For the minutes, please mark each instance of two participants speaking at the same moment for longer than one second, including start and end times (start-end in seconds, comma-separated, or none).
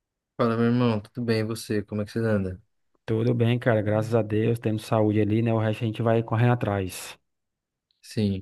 none